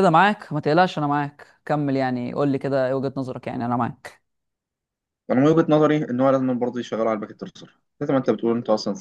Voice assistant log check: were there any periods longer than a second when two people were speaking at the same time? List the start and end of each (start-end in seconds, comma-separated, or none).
none